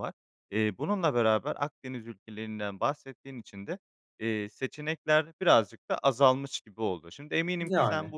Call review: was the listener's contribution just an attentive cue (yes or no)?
yes